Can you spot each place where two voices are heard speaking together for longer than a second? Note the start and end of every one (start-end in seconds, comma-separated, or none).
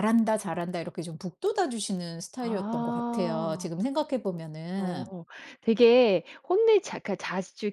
2.4-3.7